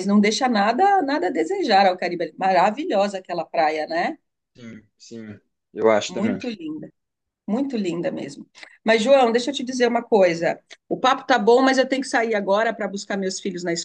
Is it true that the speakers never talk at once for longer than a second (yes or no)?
yes